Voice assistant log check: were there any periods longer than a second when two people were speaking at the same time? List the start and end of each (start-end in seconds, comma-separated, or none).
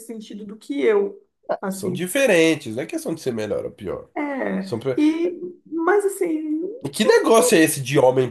none